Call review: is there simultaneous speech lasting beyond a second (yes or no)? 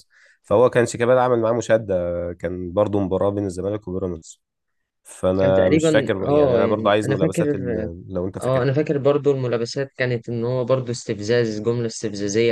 yes